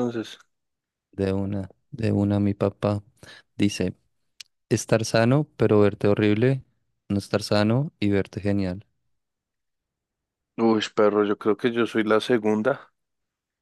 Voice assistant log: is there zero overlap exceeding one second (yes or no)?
yes